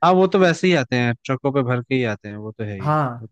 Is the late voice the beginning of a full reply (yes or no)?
yes